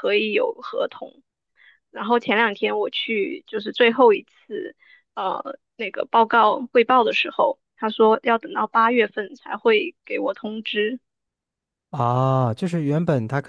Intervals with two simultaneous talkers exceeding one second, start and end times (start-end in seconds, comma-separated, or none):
none